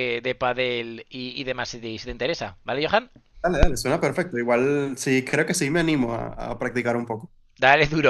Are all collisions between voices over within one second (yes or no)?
yes